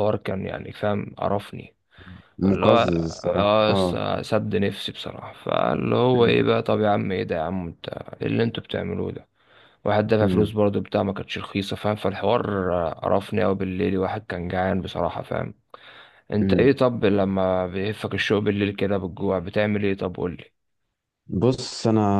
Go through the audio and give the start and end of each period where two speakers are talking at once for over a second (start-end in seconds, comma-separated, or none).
2.5-4.0